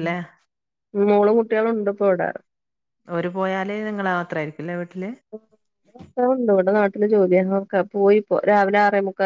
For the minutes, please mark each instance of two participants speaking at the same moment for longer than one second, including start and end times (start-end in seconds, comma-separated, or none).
none